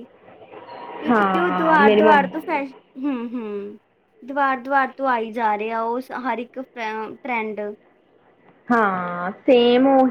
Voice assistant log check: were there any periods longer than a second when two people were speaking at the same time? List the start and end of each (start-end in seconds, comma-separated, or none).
1.1-2.4